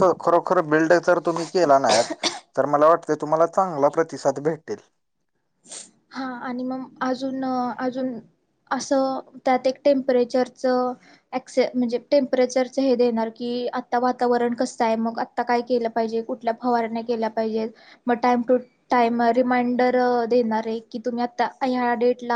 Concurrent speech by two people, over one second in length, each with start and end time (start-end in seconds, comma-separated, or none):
none